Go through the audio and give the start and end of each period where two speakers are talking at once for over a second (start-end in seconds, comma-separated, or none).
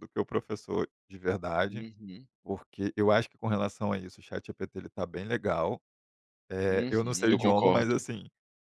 6.7-8.0